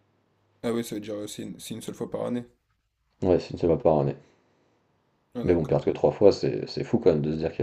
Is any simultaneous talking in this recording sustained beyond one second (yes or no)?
no